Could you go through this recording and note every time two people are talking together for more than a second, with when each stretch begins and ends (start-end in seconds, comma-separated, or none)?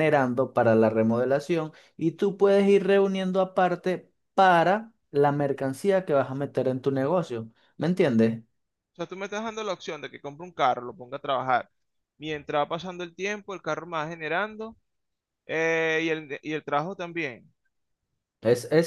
none